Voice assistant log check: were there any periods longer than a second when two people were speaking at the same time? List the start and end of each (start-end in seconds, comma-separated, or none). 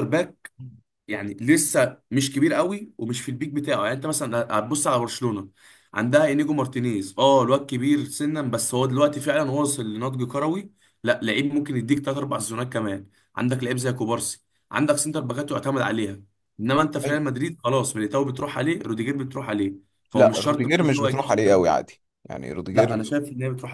20.1-21.7